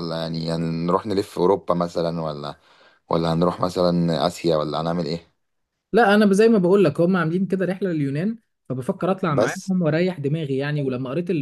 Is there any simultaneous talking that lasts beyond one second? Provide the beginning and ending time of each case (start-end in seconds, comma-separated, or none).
none